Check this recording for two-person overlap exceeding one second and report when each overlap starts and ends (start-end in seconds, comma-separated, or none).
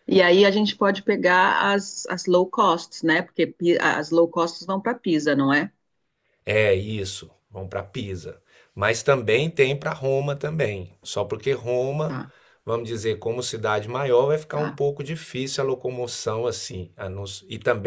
none